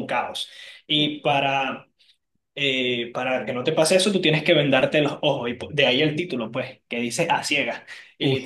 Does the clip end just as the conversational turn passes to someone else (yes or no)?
no